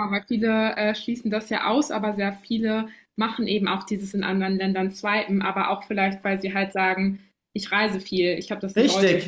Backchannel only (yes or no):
no